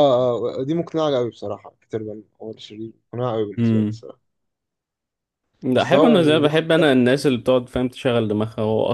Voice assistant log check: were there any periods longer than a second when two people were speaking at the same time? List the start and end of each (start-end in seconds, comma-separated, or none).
5.7-7.3